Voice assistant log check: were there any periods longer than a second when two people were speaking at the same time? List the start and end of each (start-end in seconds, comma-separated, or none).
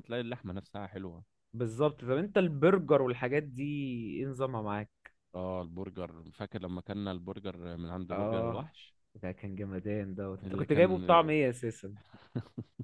none